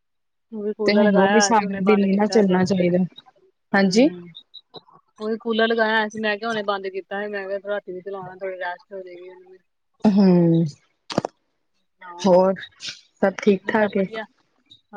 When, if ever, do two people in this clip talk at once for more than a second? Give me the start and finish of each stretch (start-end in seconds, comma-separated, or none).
0.8-3.0